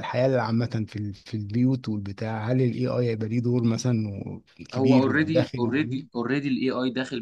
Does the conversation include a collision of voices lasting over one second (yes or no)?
yes